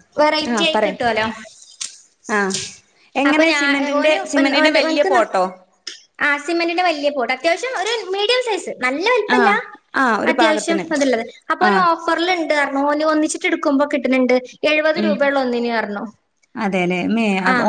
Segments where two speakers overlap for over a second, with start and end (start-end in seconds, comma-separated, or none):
3.3-5.1